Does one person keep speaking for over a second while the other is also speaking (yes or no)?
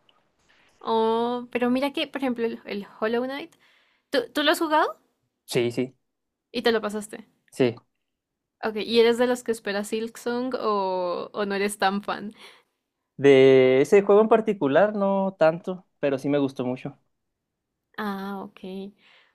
no